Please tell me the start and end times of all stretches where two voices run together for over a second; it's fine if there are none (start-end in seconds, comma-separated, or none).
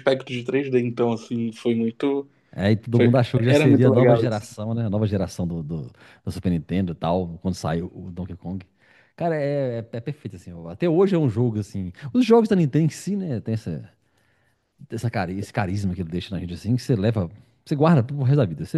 2.9-4.5